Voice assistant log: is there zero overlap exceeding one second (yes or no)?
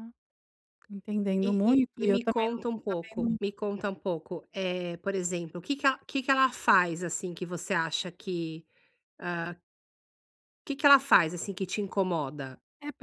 no